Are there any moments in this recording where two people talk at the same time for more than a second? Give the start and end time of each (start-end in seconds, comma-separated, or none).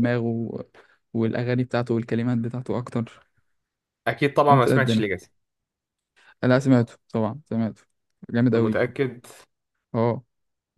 none